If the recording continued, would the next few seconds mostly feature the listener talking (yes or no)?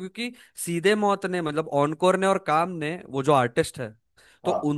no